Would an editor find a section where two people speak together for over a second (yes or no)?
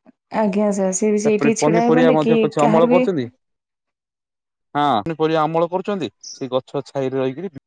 yes